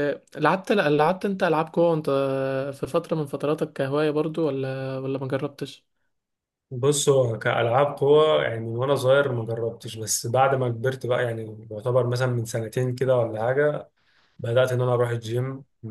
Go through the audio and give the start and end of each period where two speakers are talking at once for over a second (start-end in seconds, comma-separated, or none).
none